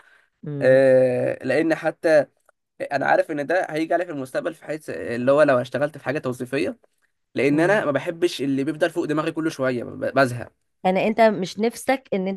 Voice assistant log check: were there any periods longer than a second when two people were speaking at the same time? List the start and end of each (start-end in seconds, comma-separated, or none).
none